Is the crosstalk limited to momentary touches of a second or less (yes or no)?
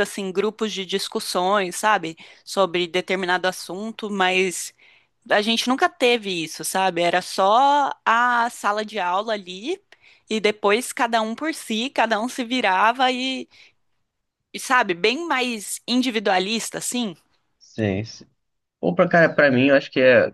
yes